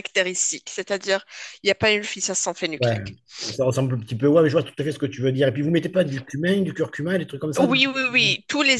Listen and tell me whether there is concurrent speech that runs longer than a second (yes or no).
no